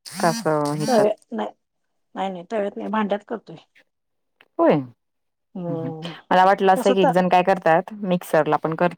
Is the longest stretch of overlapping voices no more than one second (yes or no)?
yes